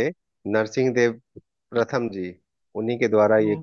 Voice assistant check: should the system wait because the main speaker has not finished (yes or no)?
yes